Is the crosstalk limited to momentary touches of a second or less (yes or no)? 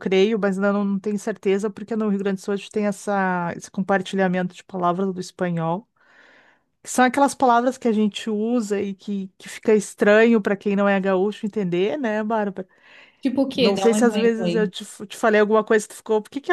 no